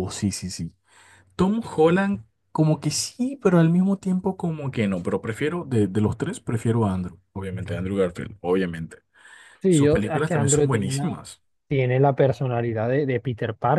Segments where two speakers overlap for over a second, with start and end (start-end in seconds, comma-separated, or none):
9.7-11.1